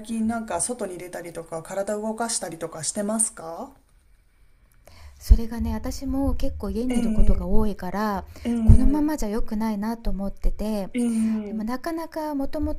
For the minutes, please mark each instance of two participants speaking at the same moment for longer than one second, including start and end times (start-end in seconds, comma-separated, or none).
none